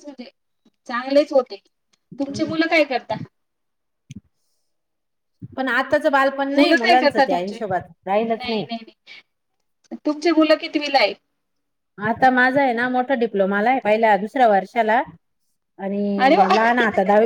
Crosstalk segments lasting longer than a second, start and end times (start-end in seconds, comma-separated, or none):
none